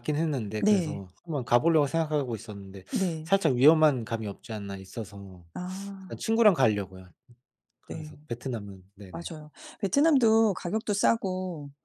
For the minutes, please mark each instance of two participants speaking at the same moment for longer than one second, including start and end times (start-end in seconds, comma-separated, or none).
none